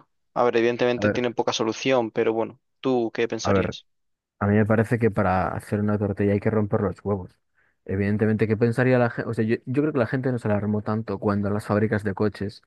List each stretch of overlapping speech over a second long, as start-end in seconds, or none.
none